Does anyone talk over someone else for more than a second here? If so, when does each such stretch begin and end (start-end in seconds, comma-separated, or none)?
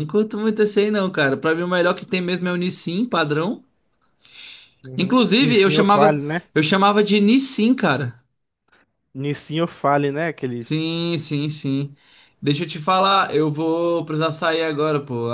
5.0-6.4